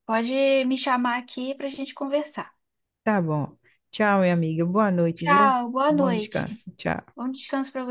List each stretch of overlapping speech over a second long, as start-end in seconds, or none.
5.2-6.6